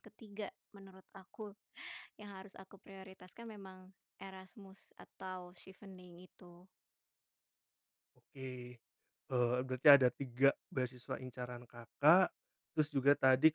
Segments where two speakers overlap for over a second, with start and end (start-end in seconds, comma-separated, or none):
none